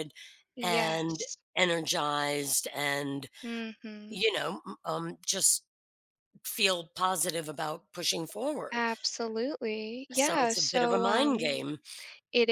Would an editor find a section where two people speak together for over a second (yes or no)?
yes